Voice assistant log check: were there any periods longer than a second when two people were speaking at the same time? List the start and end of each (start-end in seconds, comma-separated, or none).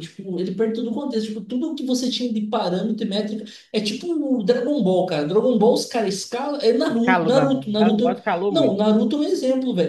6.9-8.9